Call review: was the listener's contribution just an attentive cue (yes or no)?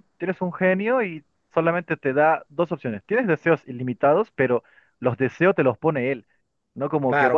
yes